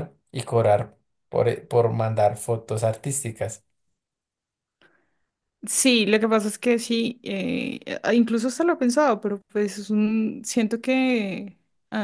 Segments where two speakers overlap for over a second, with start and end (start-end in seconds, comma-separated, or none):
none